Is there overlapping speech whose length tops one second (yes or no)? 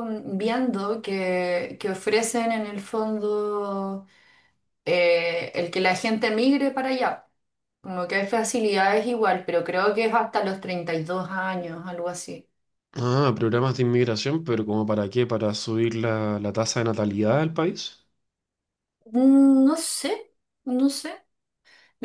no